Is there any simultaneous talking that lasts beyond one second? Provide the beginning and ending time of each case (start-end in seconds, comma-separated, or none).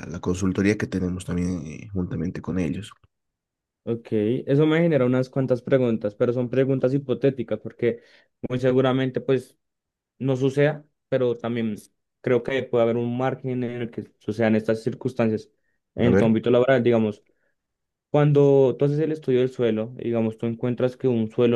none